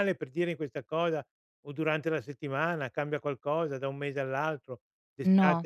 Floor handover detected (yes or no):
no